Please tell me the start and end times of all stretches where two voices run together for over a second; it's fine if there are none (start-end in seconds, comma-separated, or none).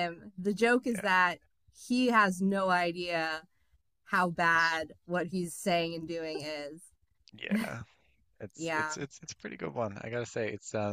none